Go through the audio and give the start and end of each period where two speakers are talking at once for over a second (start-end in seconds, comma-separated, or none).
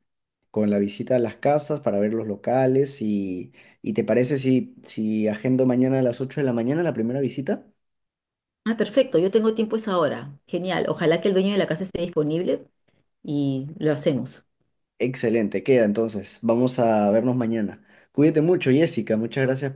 none